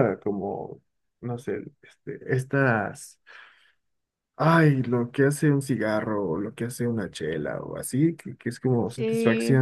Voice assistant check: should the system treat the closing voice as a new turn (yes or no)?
no